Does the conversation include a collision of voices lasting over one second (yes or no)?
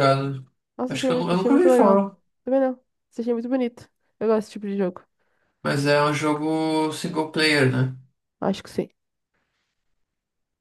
yes